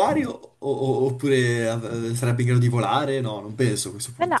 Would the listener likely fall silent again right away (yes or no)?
no